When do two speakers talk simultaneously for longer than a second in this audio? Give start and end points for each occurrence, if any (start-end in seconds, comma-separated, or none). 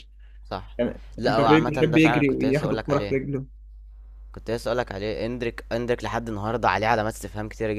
1.2-3.2